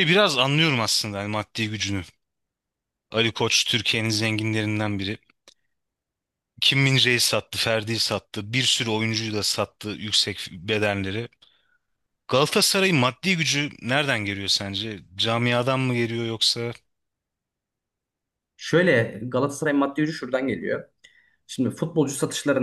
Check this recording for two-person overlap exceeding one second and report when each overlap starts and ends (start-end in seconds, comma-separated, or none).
none